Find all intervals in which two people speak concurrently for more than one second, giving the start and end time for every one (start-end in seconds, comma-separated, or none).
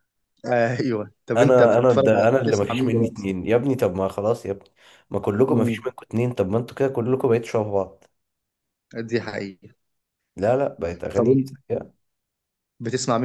1.4-3.3